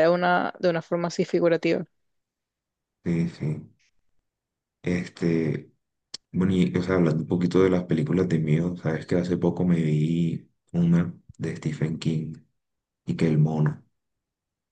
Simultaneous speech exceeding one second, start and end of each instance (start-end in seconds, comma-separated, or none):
none